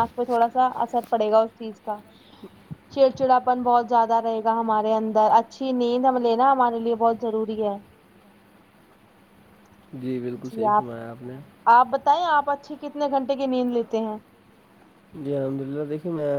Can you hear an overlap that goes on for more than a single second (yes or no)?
no